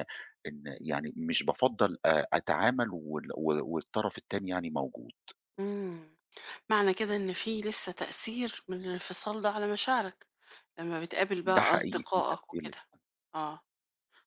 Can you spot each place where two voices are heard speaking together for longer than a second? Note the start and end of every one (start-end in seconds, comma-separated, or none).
11.4-12.8